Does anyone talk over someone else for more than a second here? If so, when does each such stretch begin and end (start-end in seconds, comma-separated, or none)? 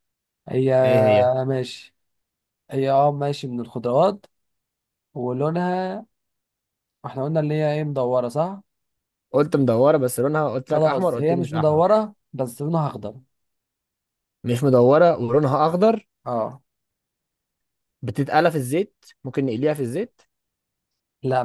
10.7-12.0